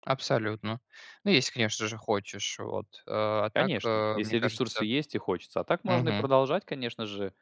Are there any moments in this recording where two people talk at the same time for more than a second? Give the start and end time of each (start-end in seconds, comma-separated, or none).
3.5-4.9